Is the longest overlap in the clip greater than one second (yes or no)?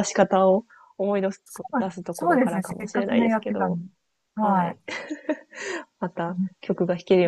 yes